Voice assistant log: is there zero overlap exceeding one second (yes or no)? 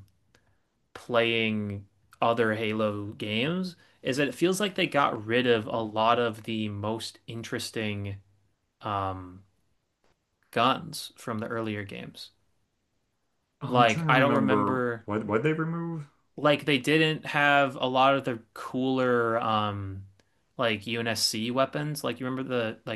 no